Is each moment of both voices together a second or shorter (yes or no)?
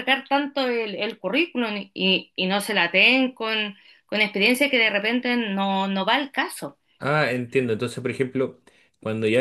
yes